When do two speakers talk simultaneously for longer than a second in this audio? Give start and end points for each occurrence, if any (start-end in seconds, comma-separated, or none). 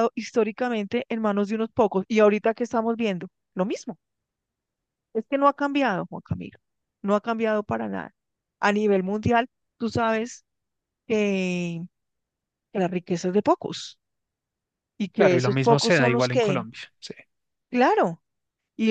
15.2-16.6